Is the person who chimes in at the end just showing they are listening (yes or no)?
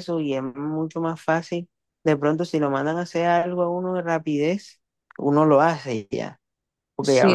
yes